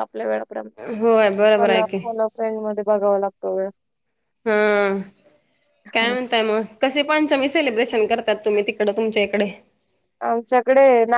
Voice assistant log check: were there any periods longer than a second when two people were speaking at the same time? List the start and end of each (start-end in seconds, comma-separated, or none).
none